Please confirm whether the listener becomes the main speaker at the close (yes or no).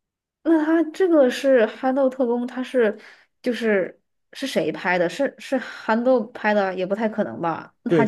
yes